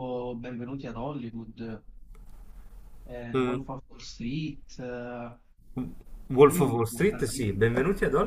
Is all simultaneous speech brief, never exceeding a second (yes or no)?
no